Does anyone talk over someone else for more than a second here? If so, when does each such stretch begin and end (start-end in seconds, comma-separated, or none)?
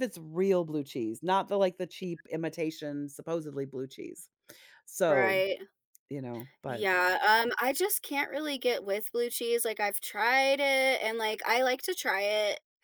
none